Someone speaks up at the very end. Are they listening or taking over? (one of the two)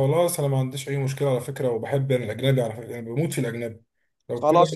taking over